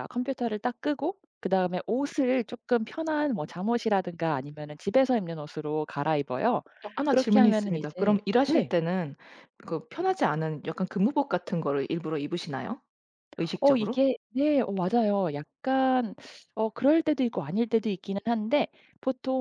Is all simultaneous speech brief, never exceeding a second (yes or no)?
no